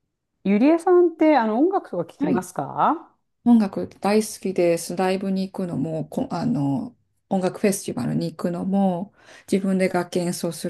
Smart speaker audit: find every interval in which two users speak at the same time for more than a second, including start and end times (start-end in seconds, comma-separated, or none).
none